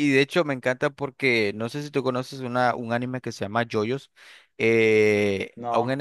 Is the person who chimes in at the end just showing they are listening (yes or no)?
yes